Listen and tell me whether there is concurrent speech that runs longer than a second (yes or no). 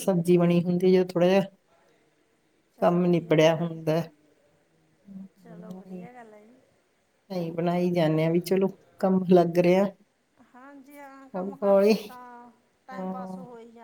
yes